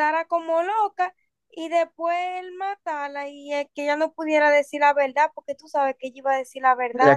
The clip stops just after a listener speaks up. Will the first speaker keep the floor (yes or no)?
no